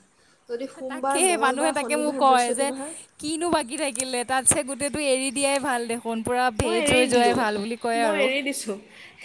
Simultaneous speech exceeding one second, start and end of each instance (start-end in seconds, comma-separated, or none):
0.9-2.7